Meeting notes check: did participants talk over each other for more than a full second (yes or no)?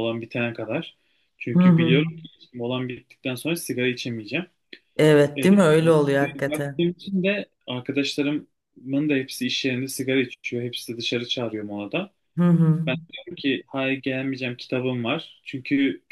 no